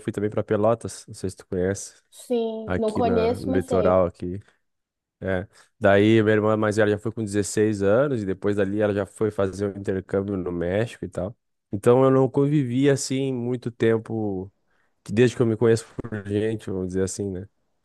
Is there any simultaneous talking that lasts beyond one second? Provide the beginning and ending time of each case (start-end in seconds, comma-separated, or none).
2.6-4.0